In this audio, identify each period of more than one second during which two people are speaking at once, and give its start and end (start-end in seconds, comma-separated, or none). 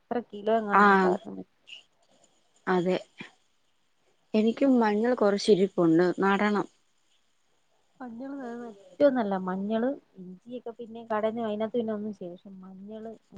none